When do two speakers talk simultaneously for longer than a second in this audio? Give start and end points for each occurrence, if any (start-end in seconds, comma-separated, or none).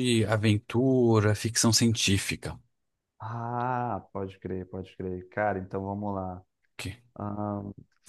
none